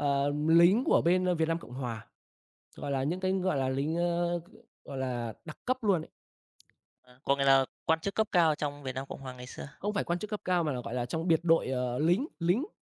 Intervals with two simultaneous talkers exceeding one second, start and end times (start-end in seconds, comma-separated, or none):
none